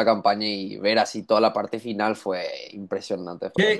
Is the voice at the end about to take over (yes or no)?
no